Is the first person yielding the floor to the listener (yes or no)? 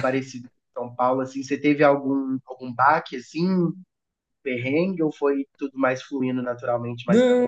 yes